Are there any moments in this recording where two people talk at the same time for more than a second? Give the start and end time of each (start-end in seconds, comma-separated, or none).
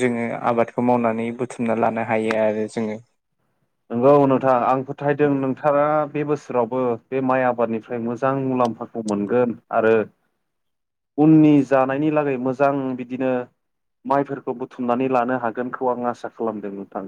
none